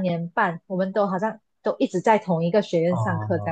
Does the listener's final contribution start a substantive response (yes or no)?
yes